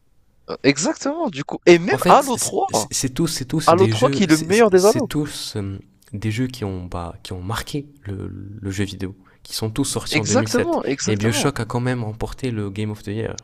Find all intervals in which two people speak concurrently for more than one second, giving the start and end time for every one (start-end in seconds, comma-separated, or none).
3.7-5.1, 10.1-11.5